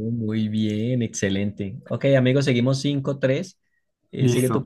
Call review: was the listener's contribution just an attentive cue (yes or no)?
no